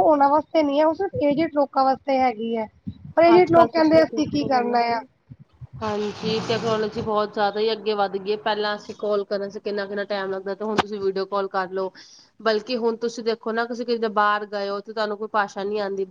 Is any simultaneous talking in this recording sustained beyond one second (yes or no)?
yes